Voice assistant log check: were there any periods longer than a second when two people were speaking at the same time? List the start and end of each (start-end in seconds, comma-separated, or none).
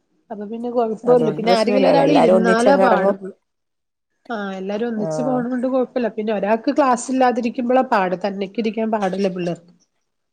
1.1-3.1